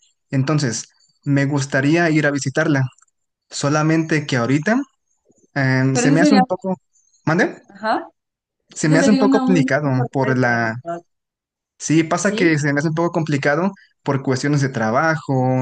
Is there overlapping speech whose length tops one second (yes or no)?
yes